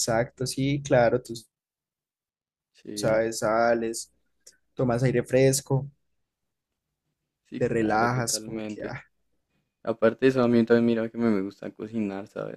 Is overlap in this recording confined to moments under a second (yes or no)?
no